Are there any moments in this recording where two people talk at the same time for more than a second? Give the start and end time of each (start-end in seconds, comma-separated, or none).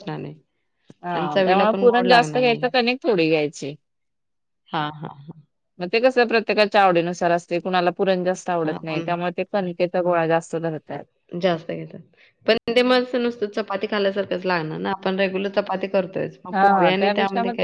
1.1-2.7